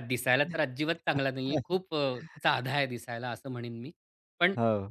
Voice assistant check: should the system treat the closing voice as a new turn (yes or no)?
no